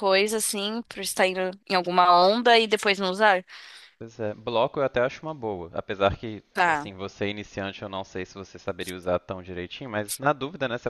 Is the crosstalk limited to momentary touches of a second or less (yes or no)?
yes